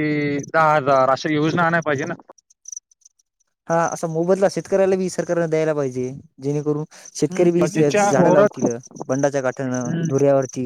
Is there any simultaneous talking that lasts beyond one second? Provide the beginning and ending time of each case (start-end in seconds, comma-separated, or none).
7.3-8.6